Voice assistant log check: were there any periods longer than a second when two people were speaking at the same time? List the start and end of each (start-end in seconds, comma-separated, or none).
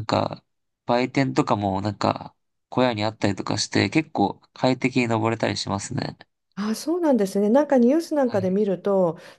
none